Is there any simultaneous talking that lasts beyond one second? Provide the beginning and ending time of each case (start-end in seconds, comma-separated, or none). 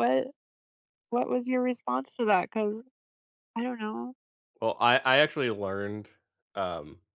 none